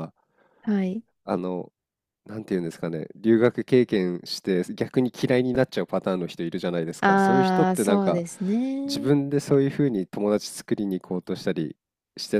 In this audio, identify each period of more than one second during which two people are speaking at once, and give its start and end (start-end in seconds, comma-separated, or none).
7.0-8.2